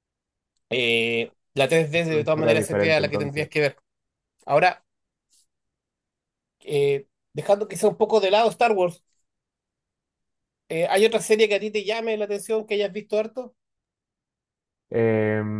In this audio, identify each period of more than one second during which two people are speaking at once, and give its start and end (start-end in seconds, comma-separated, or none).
2.1-3.5